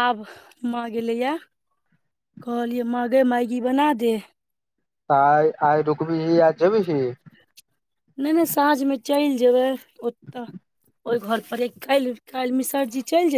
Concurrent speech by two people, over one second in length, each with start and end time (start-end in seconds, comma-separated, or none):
none